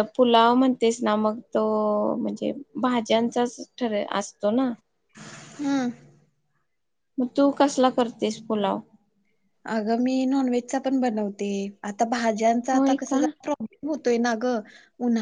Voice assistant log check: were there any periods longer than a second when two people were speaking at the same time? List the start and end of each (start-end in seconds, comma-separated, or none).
none